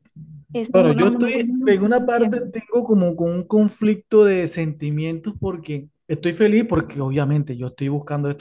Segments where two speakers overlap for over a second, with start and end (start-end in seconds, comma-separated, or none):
0.7-2.3